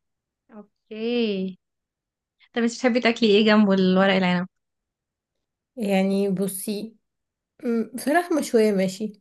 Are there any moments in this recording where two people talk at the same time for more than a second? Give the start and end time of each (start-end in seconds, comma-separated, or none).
none